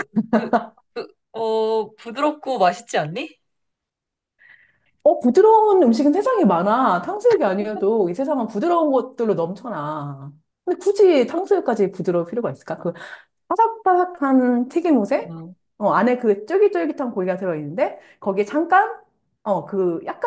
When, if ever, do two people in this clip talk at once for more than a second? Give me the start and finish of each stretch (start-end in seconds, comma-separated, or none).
none